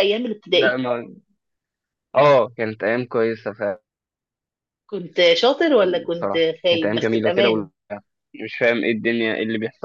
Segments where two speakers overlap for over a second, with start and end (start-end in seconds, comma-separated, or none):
6.1-7.7